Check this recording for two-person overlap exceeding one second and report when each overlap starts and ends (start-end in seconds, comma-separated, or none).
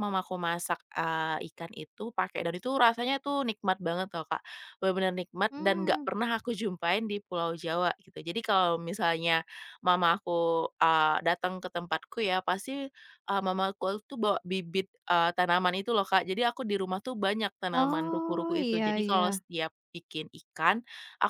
17.7-19.4